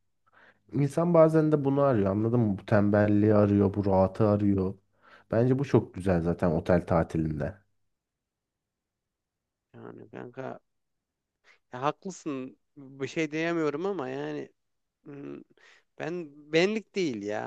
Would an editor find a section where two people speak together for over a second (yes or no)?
no